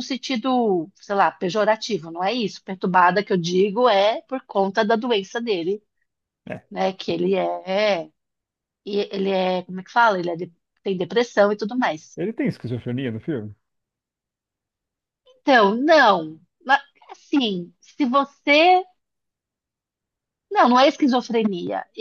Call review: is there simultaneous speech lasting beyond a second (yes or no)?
no